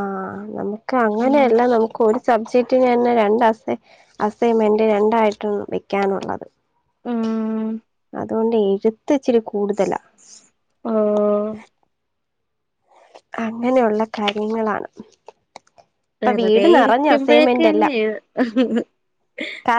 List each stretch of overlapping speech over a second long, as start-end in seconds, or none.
16.2-17.9